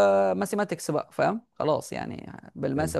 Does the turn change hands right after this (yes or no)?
no